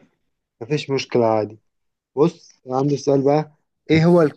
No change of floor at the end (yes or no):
yes